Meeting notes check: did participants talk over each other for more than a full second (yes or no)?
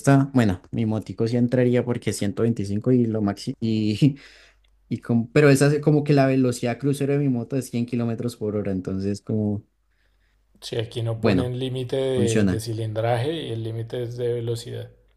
no